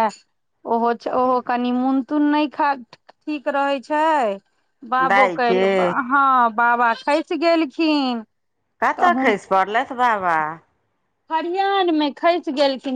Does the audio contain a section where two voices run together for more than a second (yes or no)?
no